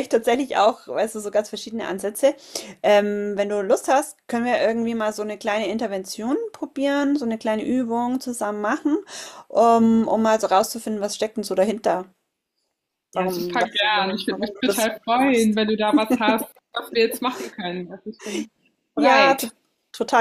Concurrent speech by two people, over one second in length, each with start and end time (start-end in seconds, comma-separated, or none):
13.1-15.6